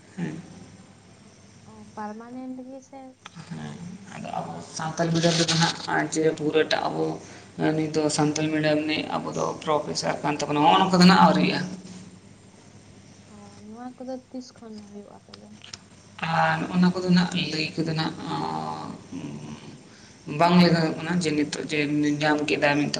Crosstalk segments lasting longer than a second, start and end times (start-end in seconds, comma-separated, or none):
none